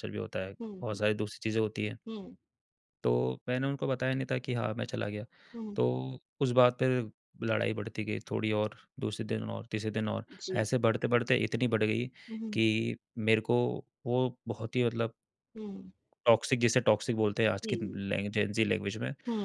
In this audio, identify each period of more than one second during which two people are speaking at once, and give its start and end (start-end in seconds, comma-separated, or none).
none